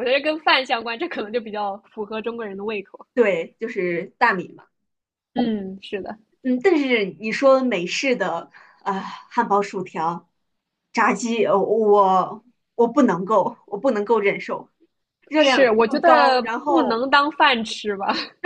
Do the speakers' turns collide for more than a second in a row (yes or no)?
yes